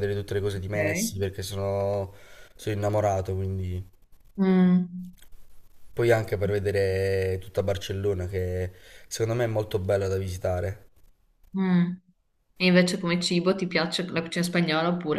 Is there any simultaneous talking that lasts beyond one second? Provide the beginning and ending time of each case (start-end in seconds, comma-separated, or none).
none